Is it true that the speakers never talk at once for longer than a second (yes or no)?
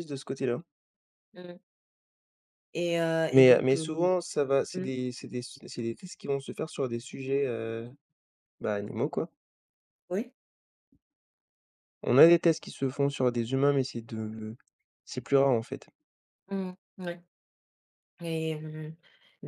yes